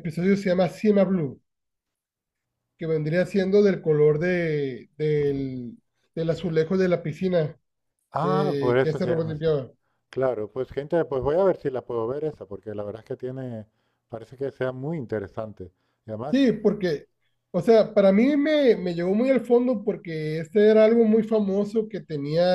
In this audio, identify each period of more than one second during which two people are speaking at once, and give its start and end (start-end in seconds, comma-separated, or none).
8.2-9.4